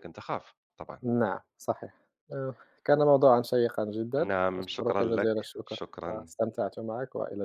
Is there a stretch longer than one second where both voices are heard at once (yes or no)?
yes